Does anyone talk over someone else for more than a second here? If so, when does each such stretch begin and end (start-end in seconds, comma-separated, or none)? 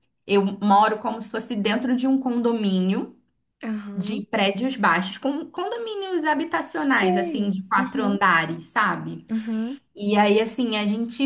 7.0-8.2